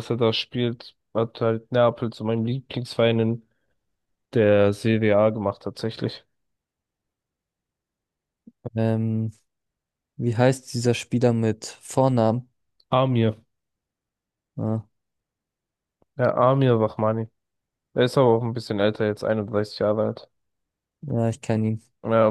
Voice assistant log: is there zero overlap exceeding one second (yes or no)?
yes